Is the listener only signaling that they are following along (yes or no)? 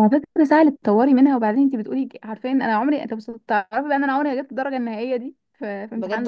no